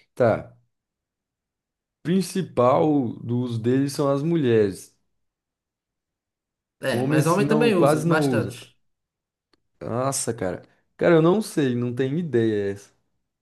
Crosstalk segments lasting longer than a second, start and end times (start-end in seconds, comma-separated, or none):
6.9-8.6